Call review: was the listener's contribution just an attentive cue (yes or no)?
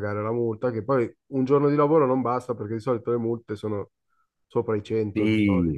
no